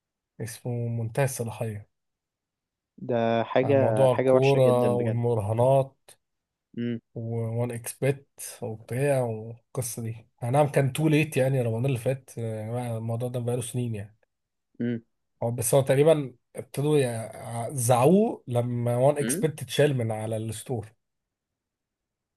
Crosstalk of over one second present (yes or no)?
yes